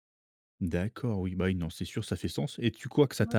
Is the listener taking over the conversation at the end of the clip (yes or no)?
no